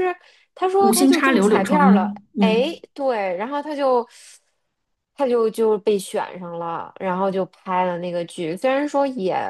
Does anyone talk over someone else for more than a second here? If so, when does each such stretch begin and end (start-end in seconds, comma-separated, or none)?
0.8-2.8